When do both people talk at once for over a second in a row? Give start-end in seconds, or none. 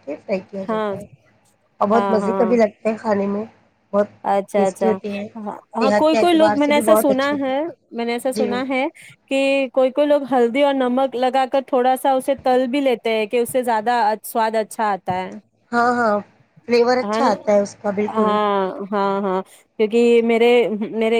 5.8-7.5